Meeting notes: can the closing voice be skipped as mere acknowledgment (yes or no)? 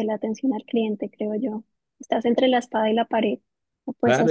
no